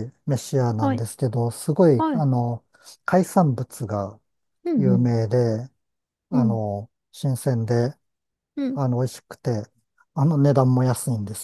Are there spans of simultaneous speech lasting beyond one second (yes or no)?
no